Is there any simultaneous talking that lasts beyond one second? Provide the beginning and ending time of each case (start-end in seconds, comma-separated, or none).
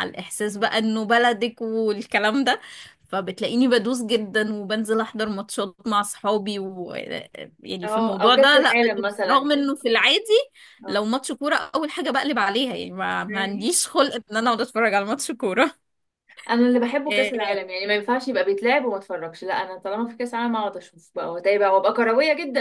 7.8-9.5